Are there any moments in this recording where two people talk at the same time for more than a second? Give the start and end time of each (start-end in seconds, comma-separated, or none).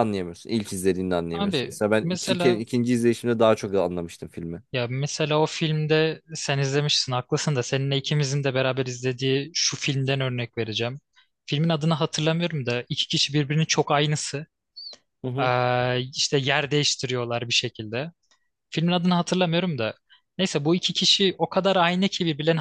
1.3-2.6